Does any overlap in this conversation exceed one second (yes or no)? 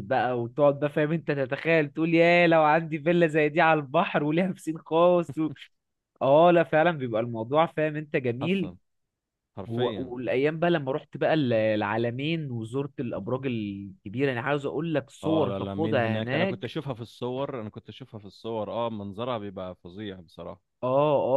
yes